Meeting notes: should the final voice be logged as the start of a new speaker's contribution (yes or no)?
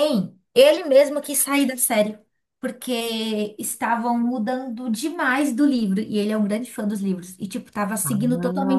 yes